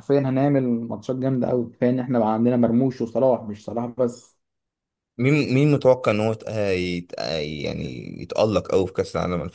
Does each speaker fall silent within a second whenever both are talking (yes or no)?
yes